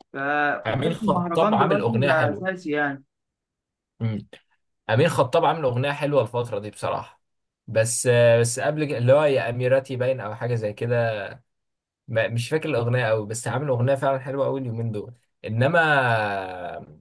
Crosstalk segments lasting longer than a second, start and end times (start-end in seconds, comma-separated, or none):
0.7-2.5